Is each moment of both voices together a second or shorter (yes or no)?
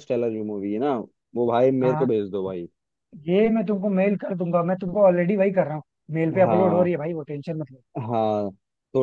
yes